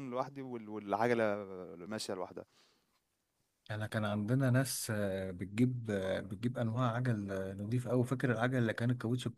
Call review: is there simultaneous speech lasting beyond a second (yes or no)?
no